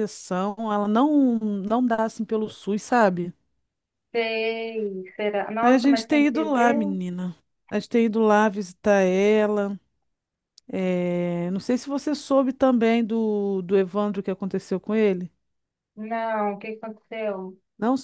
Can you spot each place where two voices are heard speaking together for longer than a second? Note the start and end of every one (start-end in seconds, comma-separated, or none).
5.6-7.0